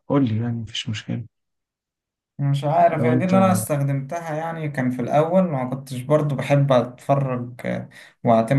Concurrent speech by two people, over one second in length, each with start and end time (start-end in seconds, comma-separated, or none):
none